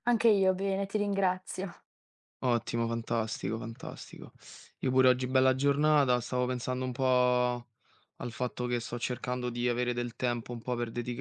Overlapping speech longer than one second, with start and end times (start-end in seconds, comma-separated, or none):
none